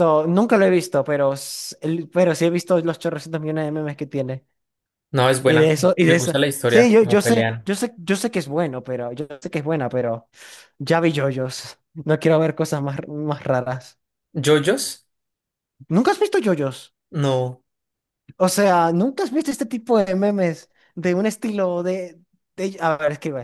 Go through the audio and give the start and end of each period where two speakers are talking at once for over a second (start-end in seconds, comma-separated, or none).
5.5-7.7